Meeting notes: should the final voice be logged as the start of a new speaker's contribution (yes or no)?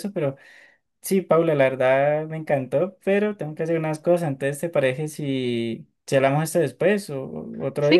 yes